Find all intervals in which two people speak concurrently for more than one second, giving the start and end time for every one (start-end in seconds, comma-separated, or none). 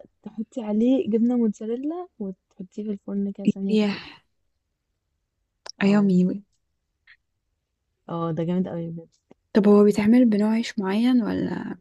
none